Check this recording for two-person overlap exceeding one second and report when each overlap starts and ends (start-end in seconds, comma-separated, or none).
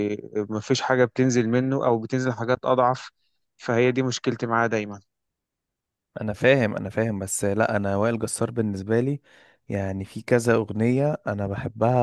none